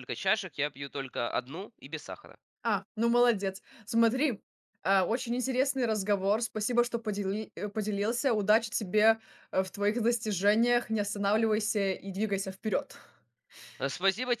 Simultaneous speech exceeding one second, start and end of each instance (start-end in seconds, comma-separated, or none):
none